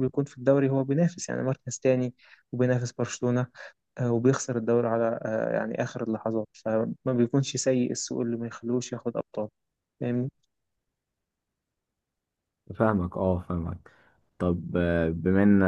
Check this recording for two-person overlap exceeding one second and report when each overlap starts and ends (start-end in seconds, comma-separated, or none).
none